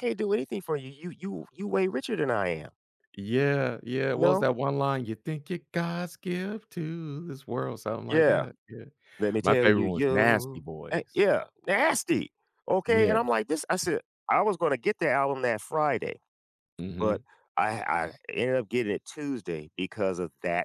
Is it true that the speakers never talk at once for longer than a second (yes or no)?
no